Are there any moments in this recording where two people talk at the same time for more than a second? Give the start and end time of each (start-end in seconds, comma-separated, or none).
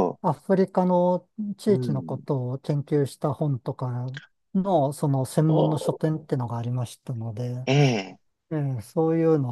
none